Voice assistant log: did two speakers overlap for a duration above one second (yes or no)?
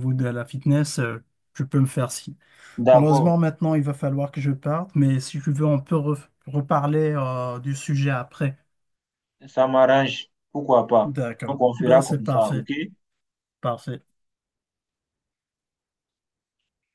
yes